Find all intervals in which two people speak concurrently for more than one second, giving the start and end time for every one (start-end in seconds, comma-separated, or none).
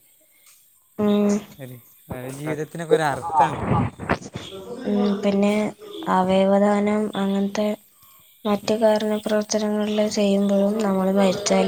none